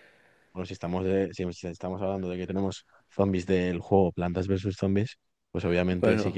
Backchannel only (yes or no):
yes